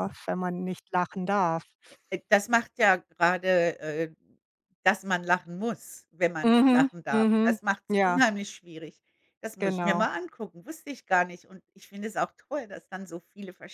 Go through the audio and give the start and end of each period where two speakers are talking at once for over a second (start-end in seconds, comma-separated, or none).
6.4-8.2